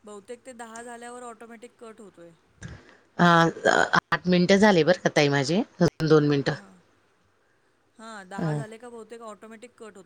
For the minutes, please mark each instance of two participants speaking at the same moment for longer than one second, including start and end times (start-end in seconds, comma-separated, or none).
none